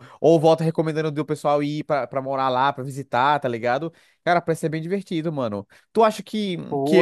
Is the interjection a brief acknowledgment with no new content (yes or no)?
yes